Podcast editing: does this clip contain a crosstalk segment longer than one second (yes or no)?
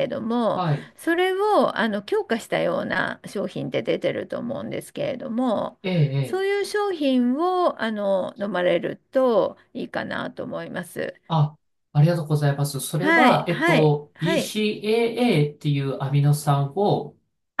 yes